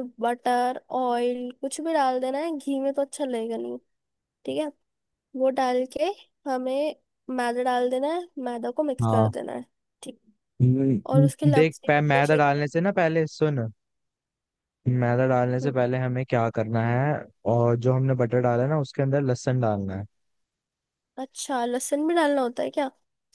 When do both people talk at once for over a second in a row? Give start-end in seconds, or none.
11.1-12.6